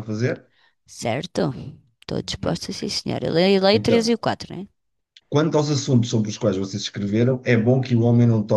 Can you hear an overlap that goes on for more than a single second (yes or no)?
no